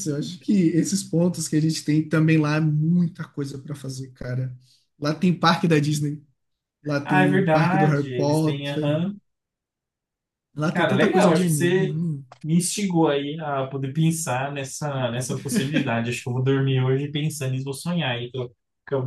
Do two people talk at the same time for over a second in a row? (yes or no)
yes